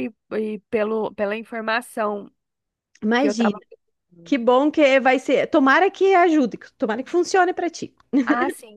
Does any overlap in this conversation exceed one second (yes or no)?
no